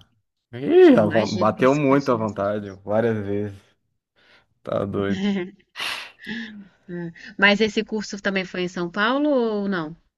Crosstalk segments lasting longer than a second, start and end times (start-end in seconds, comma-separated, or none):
0.9-2.4